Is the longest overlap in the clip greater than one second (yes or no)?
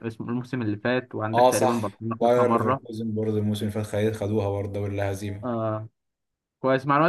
yes